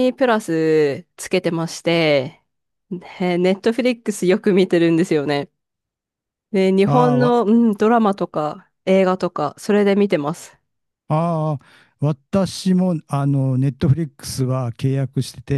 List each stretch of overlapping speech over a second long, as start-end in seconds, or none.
none